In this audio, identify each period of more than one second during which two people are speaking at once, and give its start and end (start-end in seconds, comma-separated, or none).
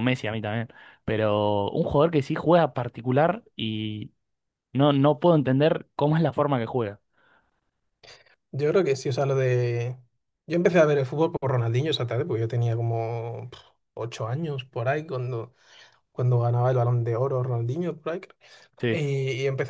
none